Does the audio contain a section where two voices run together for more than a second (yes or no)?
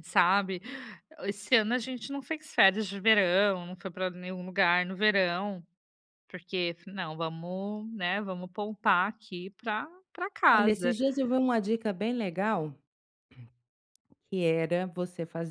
no